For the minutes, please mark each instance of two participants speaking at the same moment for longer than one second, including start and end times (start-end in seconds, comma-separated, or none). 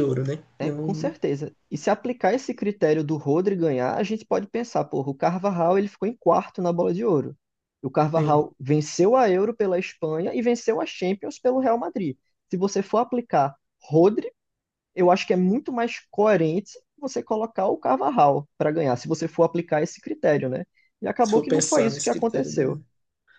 21.2-22.6